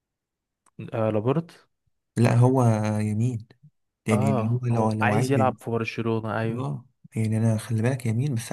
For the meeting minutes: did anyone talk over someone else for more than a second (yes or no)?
yes